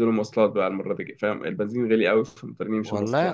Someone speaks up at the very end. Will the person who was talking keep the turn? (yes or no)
no